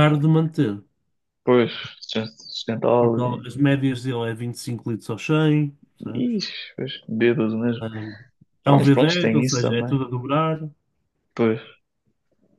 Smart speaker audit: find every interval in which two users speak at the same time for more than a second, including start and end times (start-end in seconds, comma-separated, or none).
8.7-10.0